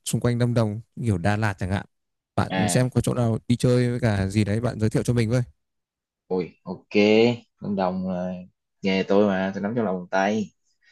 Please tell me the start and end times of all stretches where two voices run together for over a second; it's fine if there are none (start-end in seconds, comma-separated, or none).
none